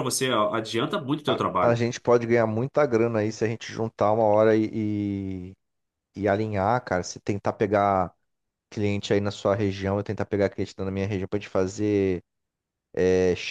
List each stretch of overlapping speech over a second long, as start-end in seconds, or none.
none